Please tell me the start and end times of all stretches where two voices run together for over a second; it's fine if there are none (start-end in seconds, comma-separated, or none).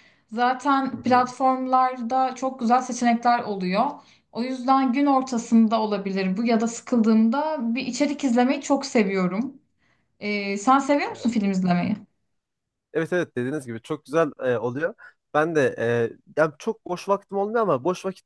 none